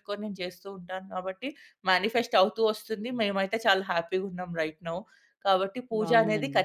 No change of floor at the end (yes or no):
yes